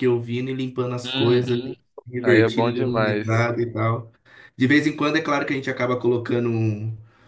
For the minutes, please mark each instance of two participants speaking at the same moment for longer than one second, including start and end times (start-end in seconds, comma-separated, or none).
2.2-3.5